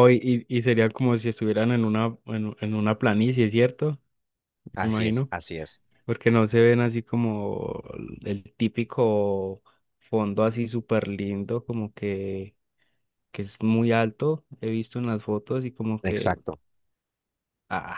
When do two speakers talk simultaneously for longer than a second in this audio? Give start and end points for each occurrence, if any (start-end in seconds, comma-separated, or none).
none